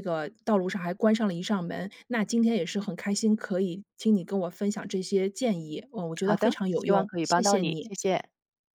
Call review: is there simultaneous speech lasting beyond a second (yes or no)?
yes